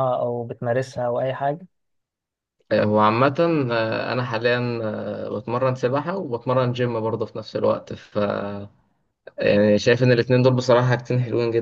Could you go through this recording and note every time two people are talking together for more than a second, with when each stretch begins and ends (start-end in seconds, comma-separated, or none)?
none